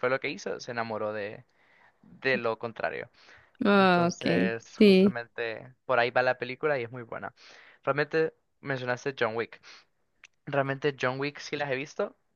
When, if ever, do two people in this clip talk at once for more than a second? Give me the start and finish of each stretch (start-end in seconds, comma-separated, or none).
3.8-5.2